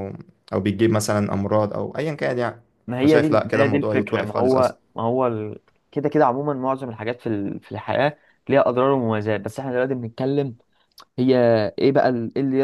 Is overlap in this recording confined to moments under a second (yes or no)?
no